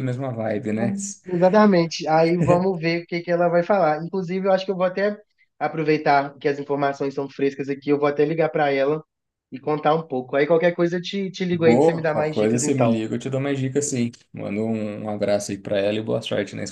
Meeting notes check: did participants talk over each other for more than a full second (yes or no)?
yes